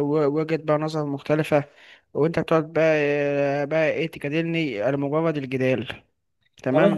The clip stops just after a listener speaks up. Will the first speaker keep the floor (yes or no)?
no